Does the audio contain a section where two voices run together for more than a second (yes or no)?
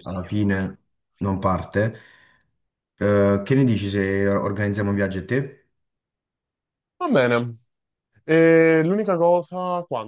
no